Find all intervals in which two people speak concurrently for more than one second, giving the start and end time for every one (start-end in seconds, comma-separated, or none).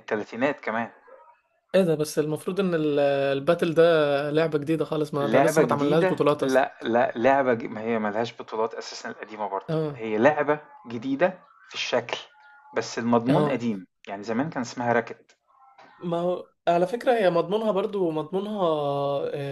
5.2-6.6